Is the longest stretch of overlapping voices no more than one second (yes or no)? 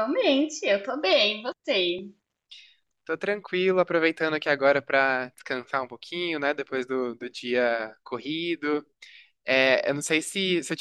yes